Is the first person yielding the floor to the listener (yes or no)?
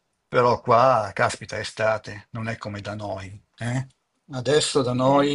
no